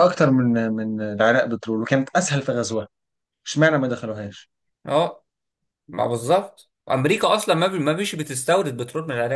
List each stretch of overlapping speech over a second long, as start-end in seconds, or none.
none